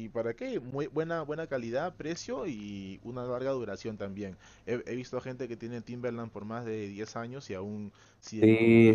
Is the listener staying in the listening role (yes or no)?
no